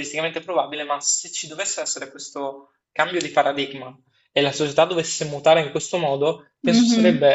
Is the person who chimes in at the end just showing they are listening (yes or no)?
yes